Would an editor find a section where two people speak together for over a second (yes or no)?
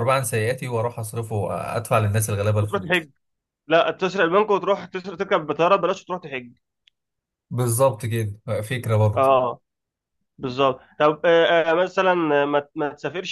no